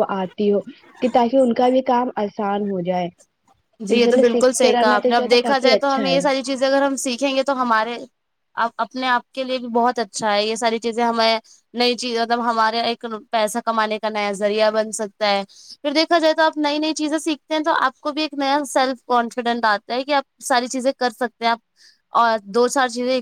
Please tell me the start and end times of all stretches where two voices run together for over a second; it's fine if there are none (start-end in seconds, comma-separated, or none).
4.0-6.2